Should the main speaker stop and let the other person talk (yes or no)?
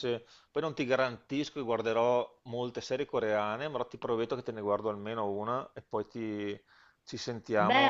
yes